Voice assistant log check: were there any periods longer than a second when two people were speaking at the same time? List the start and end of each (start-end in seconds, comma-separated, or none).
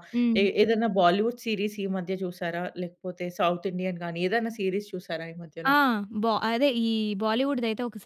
none